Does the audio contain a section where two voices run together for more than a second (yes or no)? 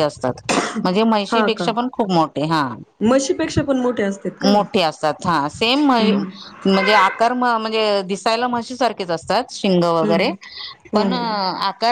no